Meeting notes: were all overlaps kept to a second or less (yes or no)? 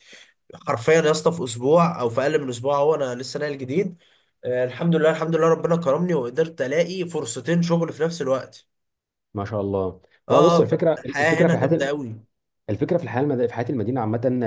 no